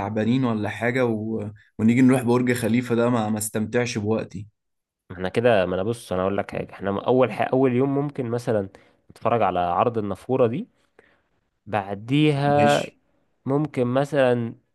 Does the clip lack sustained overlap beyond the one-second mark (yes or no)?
yes